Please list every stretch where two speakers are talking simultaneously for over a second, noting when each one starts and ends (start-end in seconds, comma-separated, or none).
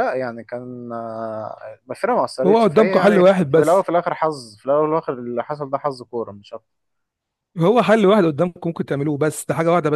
2.5-3.9